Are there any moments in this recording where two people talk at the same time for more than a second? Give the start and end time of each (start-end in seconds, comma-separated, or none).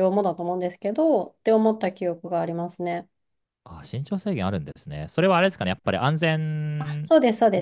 none